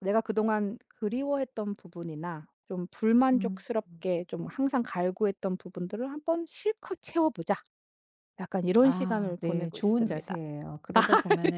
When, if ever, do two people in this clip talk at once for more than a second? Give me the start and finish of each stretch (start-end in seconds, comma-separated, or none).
8.8-10.3